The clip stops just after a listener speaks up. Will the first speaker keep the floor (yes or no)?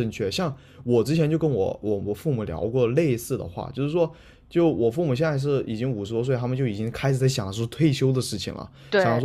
yes